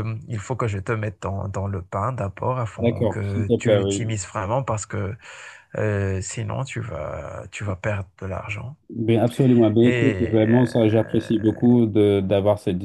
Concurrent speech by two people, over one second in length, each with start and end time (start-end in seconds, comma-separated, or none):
2.8-4.2, 9.8-11.6